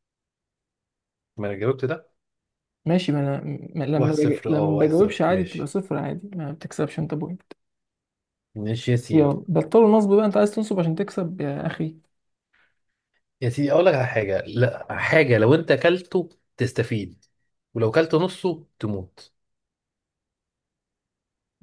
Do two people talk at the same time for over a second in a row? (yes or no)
yes